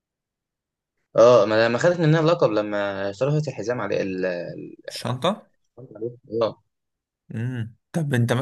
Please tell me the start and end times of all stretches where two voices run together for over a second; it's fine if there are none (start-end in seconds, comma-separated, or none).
none